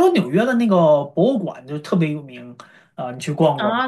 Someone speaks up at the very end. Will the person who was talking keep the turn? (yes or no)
no